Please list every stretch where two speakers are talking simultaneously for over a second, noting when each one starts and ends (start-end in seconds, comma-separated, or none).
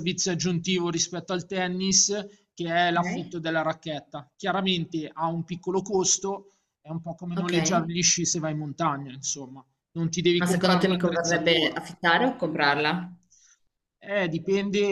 10.3-11.8